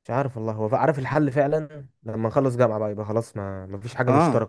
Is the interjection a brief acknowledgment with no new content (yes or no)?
no